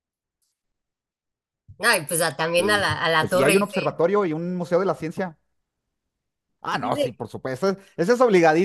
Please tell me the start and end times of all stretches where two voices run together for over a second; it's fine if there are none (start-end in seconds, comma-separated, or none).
2.6-4.0